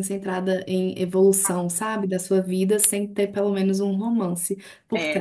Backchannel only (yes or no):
no